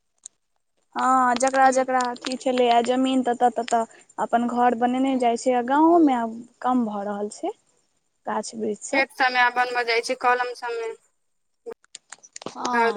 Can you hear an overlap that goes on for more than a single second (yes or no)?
no